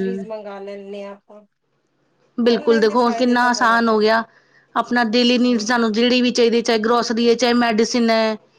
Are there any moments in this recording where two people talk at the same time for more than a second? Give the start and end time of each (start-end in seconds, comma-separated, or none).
2.5-4.0